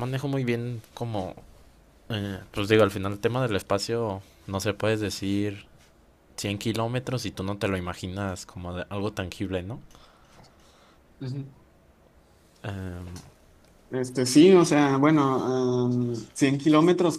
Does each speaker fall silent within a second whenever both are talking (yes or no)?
yes